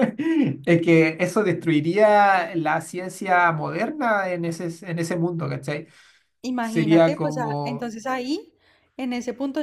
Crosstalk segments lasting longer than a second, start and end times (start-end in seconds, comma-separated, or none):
6.6-7.9